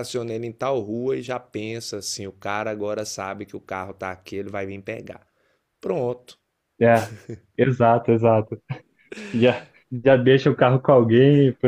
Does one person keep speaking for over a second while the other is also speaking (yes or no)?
no